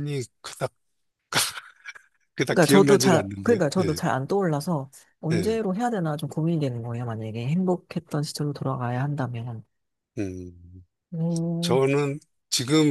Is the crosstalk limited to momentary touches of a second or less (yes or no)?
no